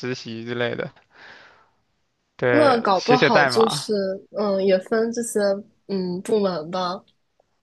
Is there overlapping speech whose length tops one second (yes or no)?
yes